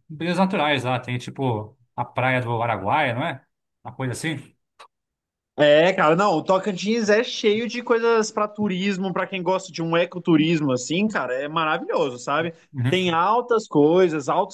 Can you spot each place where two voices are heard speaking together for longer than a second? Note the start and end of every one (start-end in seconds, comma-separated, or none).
none